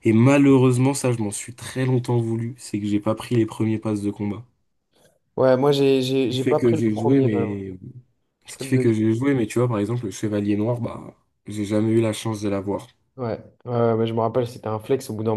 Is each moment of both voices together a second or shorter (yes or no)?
no